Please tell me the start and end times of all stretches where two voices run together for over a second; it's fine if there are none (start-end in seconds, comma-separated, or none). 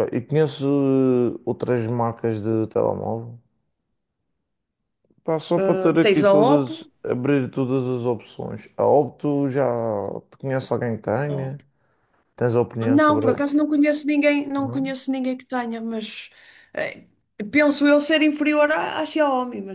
5.6-6.9